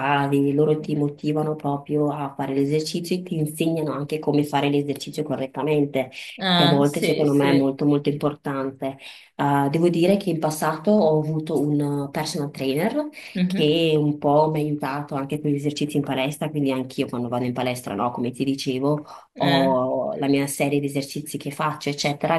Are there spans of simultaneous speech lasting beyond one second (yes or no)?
yes